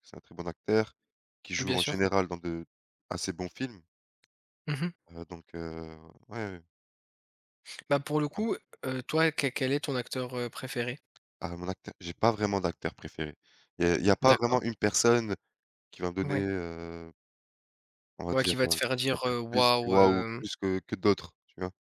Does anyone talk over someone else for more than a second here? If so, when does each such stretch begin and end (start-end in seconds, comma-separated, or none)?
18.3-20.4